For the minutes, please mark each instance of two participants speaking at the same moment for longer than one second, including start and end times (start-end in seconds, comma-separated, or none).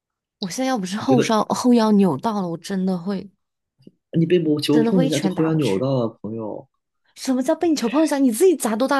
4.7-5.9